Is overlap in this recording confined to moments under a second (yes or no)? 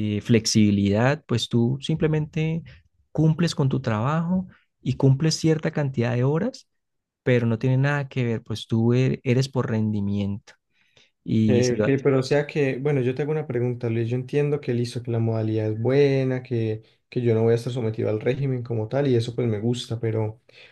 yes